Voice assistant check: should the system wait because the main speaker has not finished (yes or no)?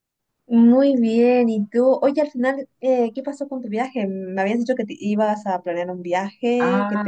no